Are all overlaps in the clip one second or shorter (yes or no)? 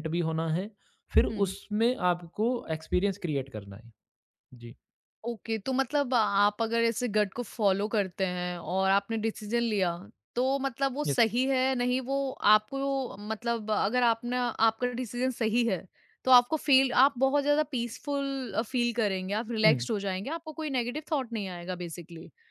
yes